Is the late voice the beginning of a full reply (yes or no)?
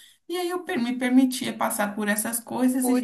no